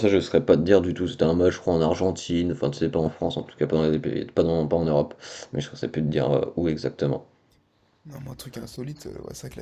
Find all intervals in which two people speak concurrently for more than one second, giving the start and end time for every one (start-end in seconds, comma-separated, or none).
none